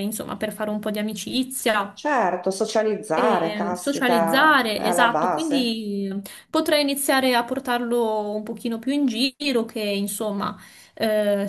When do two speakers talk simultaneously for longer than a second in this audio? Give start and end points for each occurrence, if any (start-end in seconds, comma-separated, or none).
3.2-5.8